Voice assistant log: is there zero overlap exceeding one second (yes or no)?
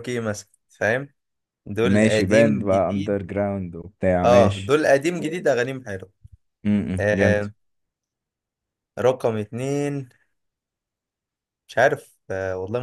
no